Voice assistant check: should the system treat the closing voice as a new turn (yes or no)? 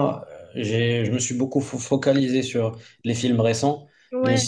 no